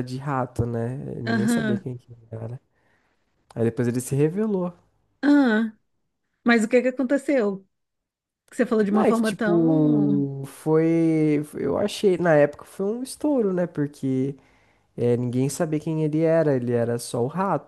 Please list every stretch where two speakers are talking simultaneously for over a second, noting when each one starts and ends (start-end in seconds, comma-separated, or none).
8.9-10.3